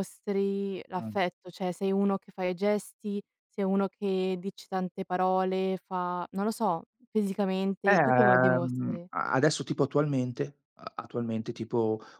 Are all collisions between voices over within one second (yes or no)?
no